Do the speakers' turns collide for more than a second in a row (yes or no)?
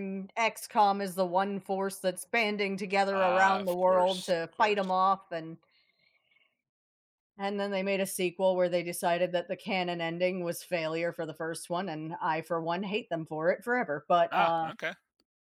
yes